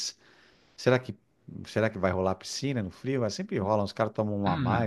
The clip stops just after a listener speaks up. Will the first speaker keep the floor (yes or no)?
no